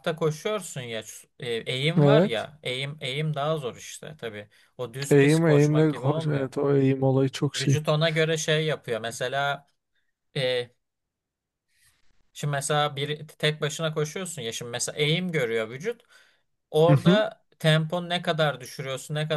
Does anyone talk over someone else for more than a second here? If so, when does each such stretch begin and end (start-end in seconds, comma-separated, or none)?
5.1-6.5